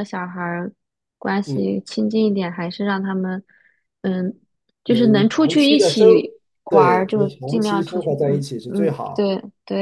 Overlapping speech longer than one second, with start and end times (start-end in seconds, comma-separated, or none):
4.8-6.1, 6.7-9.3